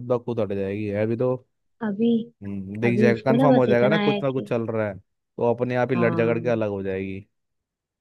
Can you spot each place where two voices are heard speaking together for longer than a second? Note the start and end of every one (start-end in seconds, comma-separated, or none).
2.9-4.5